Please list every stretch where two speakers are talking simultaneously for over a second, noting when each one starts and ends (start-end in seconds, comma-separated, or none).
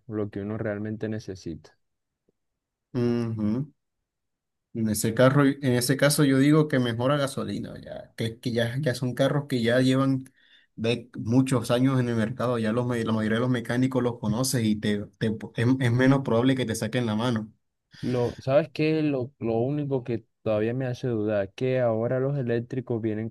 none